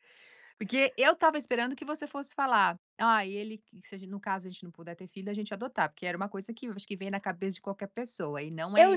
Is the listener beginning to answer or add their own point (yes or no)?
yes